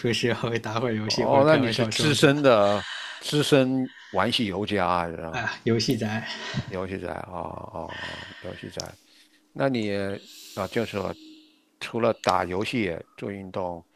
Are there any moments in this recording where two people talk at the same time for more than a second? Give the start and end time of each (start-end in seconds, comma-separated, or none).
1.1-2.3